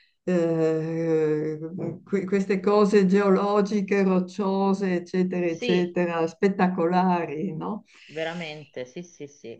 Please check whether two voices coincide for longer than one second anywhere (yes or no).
no